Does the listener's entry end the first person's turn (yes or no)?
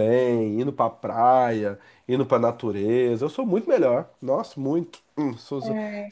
no